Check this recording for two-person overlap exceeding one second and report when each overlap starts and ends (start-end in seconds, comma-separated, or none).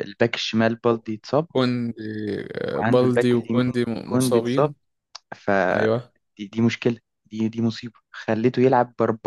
2.8-4.7